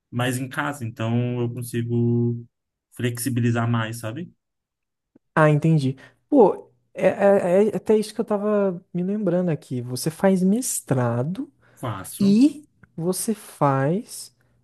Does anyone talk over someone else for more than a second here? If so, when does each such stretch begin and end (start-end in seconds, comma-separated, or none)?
none